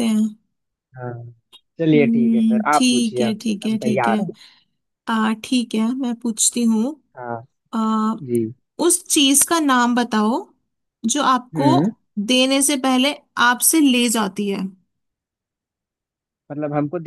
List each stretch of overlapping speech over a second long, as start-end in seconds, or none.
1.8-4.2